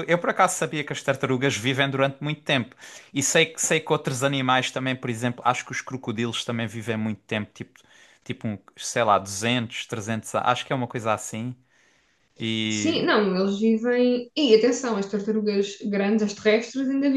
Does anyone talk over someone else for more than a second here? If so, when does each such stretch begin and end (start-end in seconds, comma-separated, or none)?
none